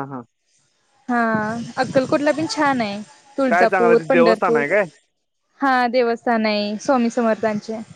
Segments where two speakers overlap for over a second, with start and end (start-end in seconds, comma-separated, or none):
3.5-4.7